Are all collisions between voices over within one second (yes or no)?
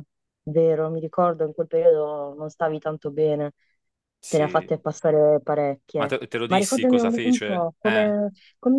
no